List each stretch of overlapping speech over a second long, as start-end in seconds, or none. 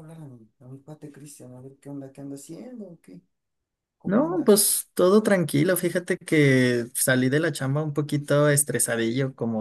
none